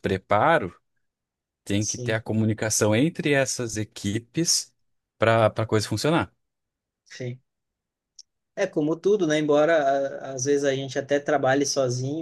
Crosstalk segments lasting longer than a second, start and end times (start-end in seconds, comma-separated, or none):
none